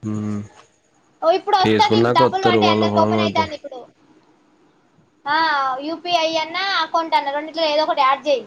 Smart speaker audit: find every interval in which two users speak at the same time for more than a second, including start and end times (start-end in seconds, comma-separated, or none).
1.6-3.5